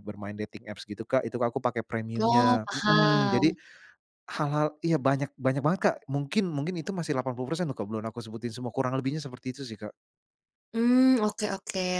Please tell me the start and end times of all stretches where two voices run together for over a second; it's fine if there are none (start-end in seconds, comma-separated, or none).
2.2-3.5